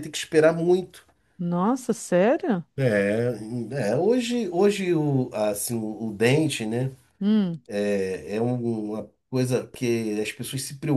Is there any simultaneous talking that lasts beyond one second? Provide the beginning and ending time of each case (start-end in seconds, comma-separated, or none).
none